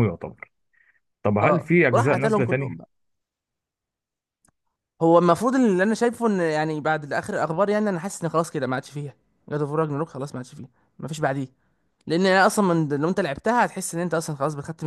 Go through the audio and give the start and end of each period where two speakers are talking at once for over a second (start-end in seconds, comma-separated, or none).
1.4-2.8